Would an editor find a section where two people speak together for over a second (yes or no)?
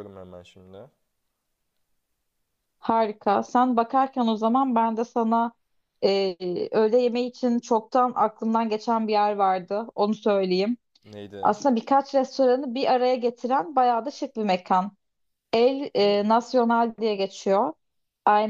no